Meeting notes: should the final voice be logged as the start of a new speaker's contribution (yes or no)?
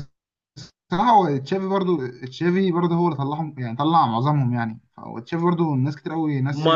yes